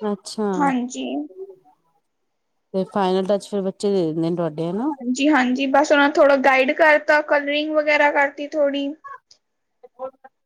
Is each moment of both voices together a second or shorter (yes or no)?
yes